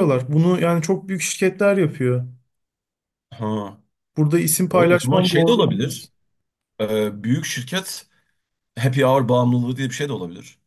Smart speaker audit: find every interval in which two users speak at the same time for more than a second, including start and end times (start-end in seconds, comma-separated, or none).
4.7-6.1